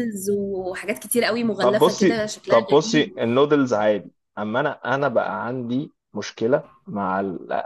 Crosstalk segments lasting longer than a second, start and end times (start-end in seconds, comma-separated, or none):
1.6-3.1